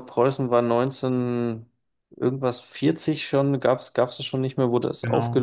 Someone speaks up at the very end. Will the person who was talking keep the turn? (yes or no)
yes